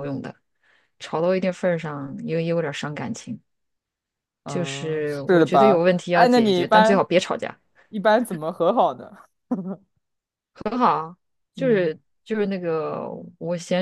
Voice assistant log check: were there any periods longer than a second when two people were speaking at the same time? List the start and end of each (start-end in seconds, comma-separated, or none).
4.5-7.0